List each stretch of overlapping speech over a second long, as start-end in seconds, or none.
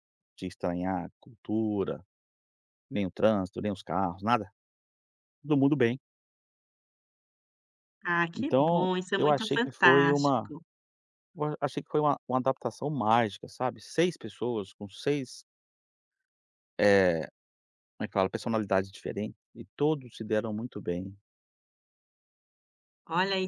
8.3-10.5